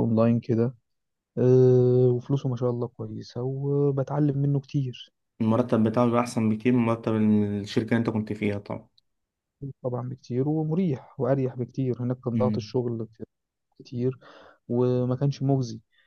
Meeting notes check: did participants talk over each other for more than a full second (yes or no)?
no